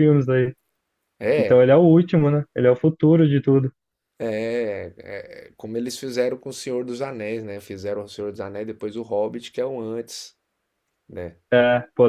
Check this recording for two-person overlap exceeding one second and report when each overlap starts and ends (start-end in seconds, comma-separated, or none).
none